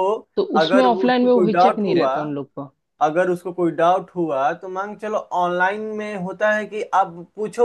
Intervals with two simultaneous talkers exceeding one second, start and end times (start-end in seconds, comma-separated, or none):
0.6-2.1